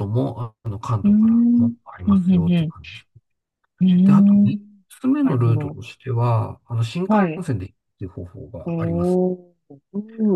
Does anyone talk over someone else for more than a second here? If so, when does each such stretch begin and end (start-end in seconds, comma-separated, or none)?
1.0-2.7